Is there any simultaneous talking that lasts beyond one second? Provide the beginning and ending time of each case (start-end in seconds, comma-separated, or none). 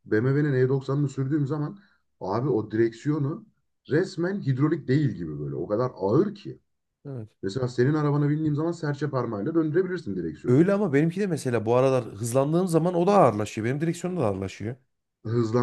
none